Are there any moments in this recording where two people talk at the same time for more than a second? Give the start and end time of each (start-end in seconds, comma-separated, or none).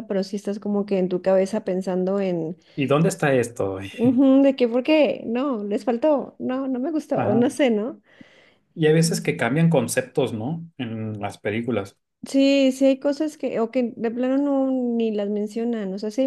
none